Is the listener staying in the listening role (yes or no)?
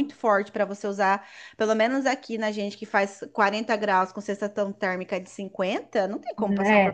no